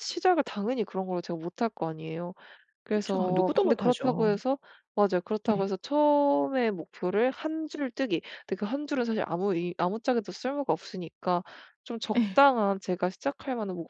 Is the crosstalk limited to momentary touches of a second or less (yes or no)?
no